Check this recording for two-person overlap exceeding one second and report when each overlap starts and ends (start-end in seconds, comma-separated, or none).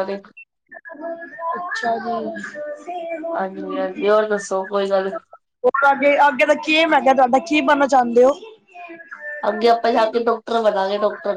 none